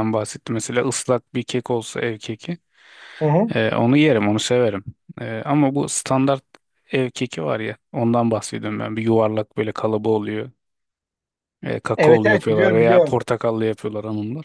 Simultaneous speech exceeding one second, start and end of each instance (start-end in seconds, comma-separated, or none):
12.0-13.2